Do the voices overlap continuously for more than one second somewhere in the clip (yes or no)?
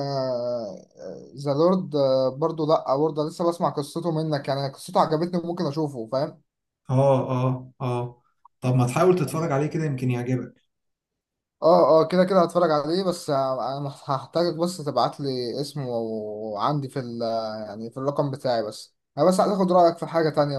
no